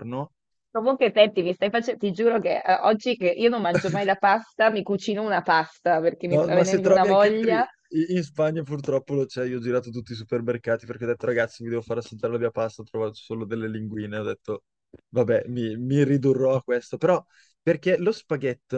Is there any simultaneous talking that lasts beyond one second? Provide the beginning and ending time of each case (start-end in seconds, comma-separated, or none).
6.3-7.5